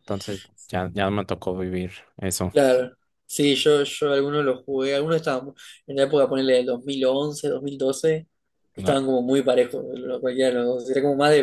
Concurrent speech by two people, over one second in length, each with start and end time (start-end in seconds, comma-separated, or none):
none